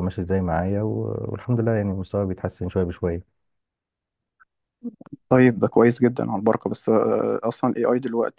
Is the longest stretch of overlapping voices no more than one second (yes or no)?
yes